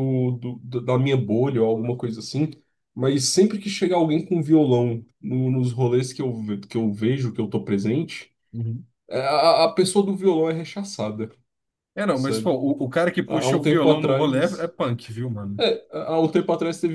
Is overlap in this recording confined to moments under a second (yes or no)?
no